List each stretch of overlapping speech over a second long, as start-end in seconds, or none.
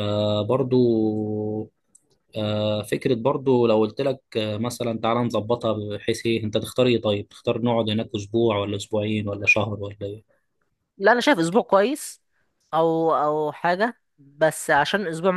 none